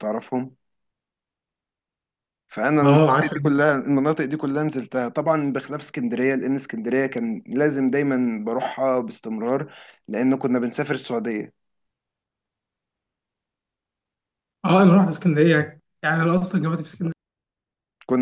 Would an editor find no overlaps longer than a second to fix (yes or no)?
yes